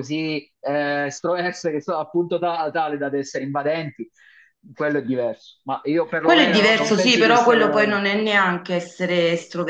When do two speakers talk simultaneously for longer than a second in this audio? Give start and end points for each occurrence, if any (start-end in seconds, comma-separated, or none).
6.2-8.0